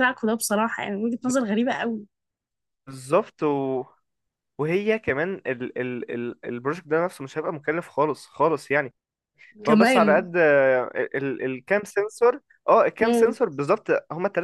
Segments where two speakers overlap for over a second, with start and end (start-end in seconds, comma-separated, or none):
none